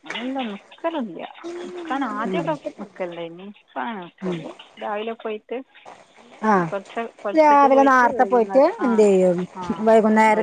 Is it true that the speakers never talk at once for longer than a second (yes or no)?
no